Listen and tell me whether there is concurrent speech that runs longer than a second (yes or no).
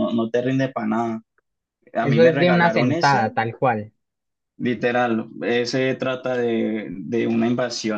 yes